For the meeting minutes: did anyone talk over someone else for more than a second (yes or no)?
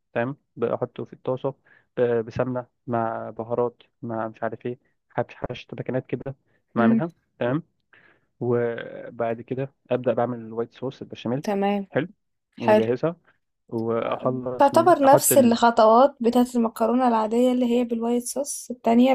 yes